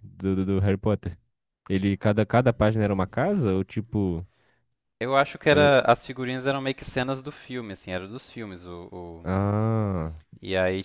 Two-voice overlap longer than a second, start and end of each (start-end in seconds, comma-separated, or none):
none